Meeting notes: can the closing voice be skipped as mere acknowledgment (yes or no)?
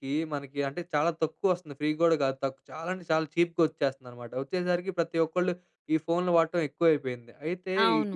yes